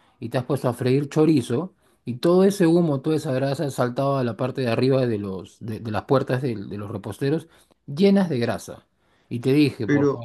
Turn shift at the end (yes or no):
no